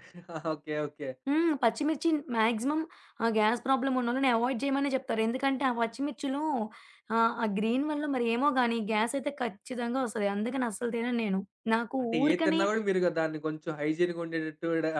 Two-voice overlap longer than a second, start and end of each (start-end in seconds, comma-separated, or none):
none